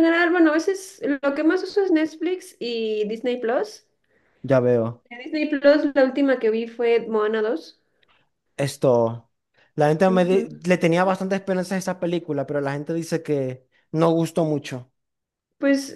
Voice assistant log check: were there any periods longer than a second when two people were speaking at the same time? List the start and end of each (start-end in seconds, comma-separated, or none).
none